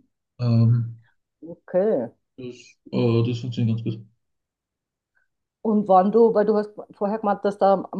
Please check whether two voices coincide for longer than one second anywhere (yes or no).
no